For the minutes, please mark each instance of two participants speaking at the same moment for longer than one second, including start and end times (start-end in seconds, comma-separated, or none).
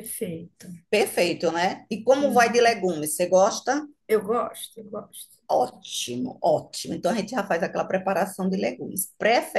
none